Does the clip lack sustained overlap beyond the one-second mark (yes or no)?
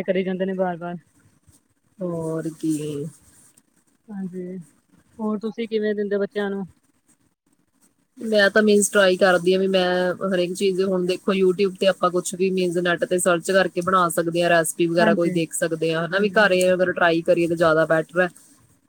yes